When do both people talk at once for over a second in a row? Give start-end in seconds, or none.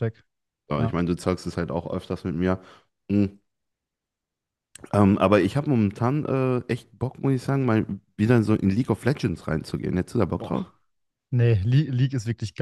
none